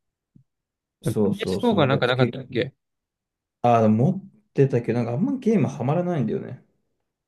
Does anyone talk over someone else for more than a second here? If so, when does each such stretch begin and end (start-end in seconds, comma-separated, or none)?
1.1-2.4